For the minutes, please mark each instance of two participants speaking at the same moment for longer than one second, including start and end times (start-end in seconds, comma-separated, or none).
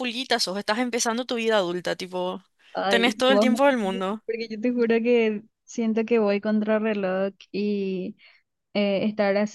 2.9-4.2